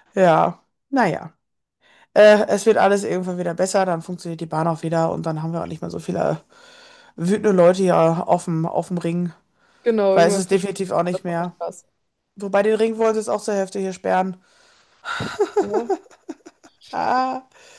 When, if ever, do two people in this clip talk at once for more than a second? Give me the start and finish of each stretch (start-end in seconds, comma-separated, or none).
10.1-11.5